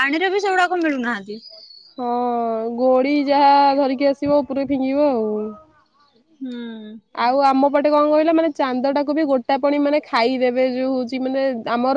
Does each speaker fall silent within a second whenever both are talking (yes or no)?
yes